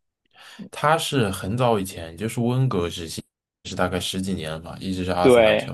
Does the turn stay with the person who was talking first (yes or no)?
no